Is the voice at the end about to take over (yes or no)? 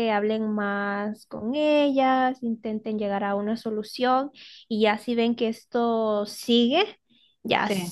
no